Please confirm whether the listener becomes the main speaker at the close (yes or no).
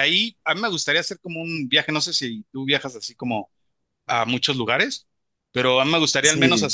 no